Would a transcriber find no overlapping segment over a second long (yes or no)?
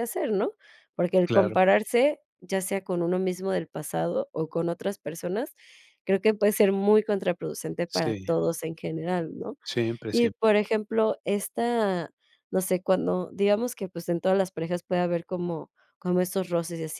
yes